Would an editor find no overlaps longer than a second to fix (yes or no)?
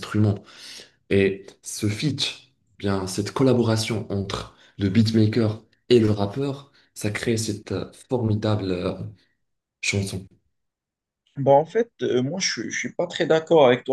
yes